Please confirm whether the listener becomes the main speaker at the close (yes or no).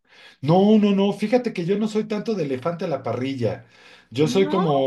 no